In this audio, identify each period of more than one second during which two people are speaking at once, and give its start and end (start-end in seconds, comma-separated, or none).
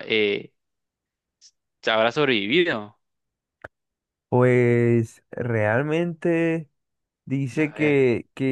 none